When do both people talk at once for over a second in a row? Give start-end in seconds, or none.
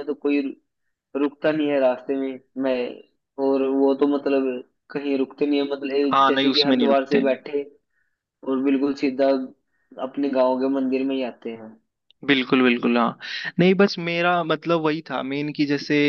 6.1-7.4